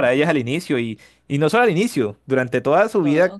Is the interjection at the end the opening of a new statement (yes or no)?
no